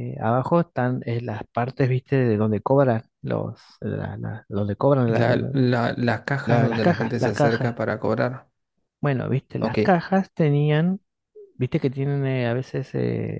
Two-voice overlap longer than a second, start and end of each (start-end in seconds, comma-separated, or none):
6.5-7.8